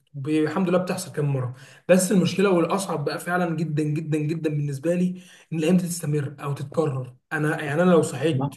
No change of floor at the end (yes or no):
yes